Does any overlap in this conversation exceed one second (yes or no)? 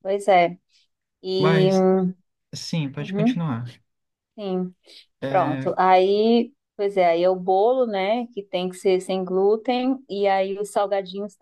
no